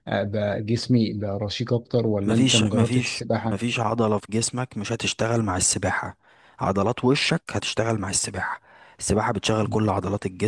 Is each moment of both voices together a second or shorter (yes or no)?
no